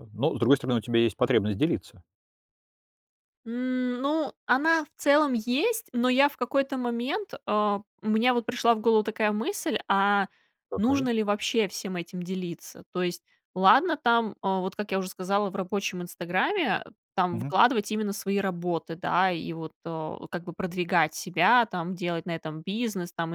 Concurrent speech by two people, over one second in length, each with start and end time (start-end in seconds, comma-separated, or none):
none